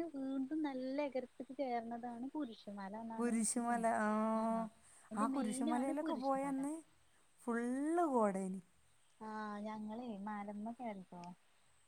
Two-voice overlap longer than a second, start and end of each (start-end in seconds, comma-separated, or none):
5.2-6.6